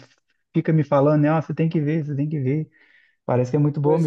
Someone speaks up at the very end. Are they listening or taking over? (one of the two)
taking over